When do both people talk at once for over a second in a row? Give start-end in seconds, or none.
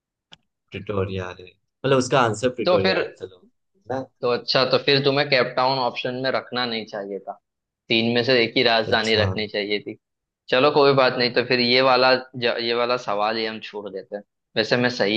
none